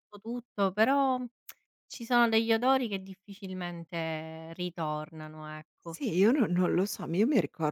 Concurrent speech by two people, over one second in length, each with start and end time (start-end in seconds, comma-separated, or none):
none